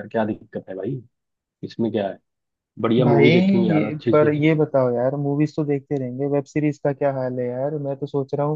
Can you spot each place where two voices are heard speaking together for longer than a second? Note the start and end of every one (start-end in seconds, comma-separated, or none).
3.0-4.4